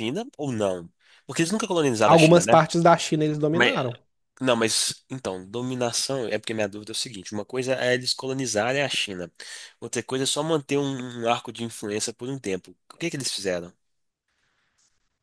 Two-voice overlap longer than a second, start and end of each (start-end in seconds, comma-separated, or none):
none